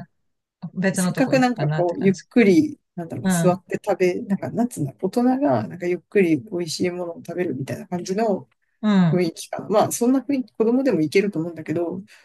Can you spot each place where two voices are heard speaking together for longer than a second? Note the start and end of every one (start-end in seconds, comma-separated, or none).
0.9-2.2